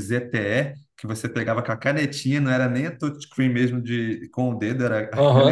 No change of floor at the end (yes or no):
no